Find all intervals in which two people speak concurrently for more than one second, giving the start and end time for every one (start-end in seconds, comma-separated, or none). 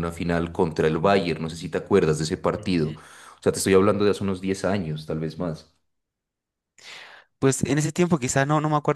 none